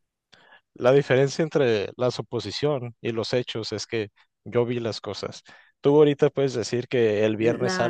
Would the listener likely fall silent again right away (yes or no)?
yes